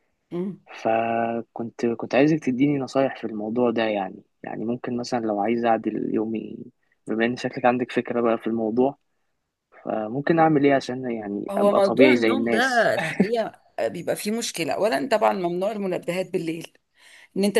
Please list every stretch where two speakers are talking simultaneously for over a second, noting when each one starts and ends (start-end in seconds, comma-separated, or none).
11.5-12.9